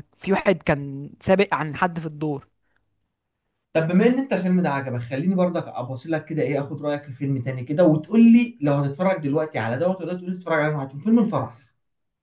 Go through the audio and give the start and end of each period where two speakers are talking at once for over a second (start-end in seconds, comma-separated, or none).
none